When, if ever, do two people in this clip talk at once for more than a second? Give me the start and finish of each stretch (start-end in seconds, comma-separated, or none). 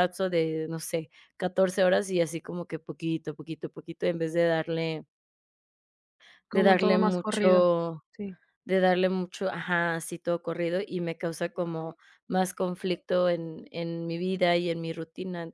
6.5-7.7